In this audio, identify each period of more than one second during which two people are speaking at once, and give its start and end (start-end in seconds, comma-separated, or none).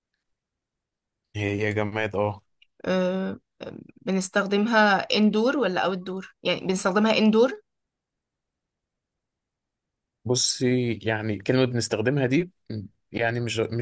none